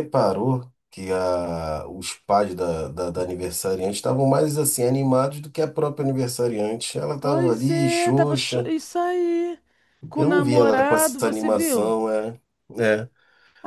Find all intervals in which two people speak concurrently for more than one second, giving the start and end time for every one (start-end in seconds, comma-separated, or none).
7.2-8.7, 10.2-11.9